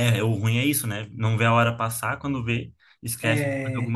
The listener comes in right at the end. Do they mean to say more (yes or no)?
no